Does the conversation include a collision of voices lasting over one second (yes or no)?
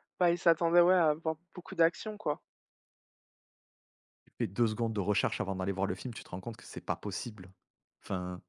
no